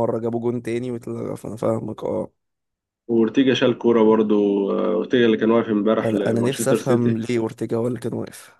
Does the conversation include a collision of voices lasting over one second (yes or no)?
yes